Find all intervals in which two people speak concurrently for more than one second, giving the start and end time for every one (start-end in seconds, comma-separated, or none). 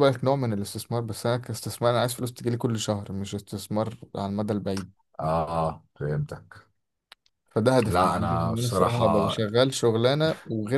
7.8-9.3